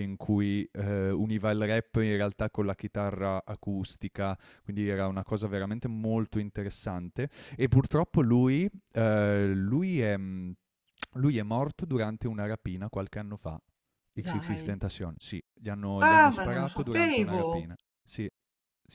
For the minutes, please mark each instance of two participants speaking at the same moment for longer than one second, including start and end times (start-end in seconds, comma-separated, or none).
16.0-17.4